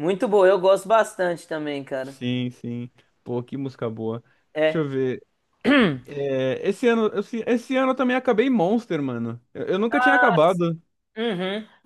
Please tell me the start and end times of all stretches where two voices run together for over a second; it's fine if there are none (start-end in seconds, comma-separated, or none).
none